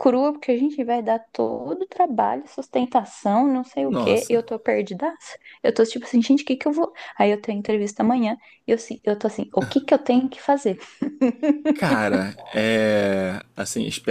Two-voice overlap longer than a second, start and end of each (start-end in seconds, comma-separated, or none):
none